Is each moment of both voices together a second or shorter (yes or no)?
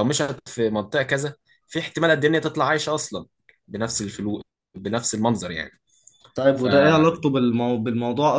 yes